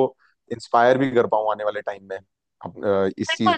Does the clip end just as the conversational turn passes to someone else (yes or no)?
yes